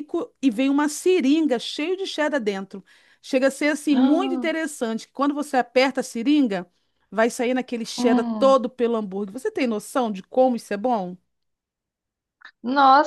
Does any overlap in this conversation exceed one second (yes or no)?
no